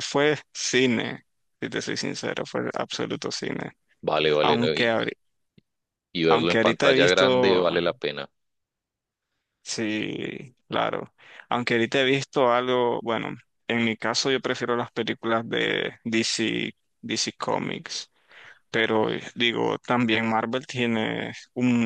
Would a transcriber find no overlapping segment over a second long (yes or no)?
no